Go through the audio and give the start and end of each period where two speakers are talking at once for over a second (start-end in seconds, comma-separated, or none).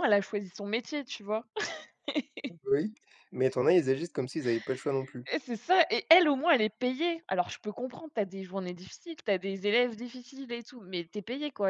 none